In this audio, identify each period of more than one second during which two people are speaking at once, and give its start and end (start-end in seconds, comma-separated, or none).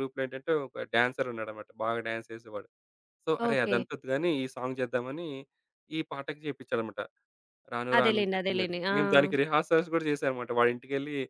8.0-9.4